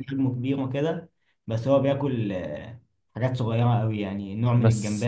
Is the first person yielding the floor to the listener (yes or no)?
no